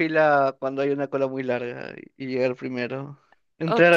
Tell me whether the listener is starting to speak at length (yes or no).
yes